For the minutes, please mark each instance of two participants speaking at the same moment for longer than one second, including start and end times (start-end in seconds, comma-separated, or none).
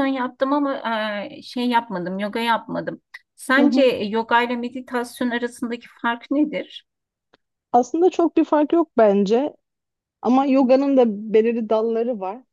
none